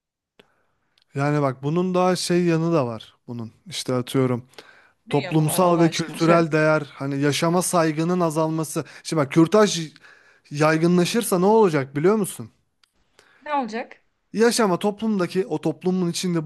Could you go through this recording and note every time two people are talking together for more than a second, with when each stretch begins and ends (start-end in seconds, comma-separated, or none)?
5.1-6.4